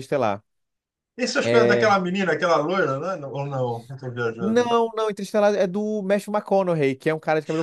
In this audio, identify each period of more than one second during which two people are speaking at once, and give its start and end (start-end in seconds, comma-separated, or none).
none